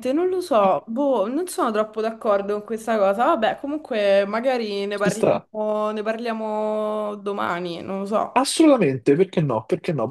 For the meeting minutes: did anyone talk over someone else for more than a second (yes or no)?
no